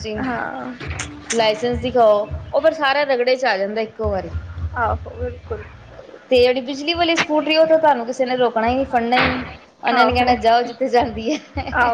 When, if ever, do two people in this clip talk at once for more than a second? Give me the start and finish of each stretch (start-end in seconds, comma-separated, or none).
none